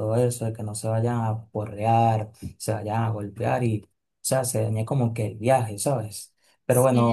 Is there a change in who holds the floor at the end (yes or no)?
no